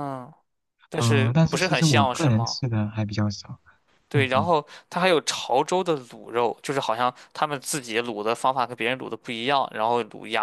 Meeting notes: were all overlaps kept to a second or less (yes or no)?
no